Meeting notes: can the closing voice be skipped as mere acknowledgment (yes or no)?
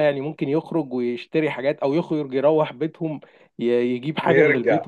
no